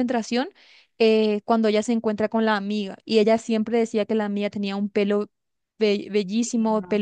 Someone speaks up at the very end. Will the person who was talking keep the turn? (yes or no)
yes